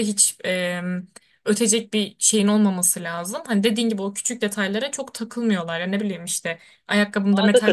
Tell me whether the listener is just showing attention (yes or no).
yes